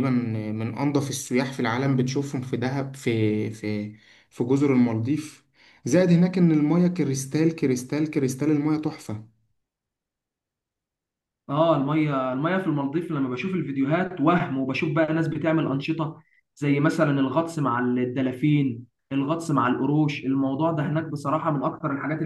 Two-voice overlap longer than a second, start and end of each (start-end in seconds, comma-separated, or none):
none